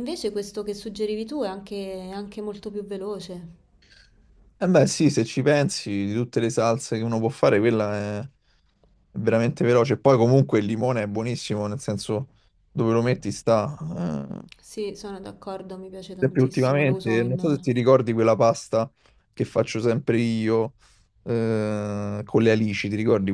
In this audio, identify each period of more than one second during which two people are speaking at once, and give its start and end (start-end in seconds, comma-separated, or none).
16.2-17.6